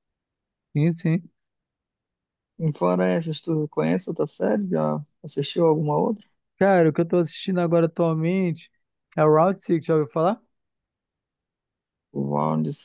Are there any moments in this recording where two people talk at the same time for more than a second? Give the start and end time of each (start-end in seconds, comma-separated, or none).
none